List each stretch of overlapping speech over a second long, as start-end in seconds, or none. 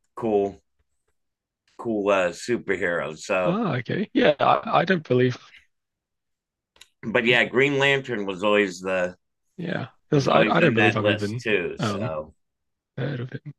10.1-12.1